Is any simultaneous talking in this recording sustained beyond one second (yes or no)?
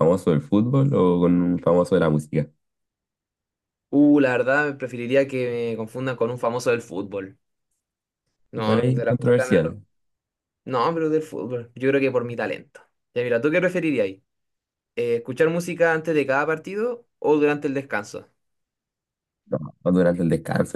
yes